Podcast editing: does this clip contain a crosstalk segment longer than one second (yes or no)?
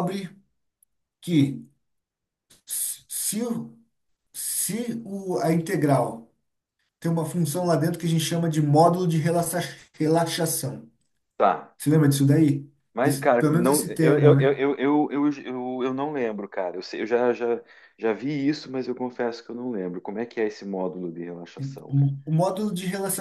yes